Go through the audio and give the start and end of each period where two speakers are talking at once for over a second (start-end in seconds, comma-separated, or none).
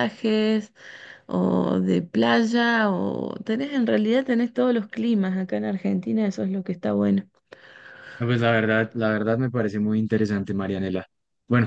none